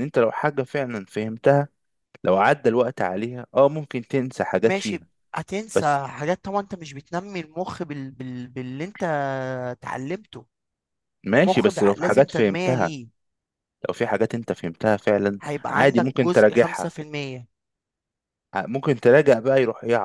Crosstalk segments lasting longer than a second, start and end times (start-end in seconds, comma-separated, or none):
11.3-12.9, 15.4-16.9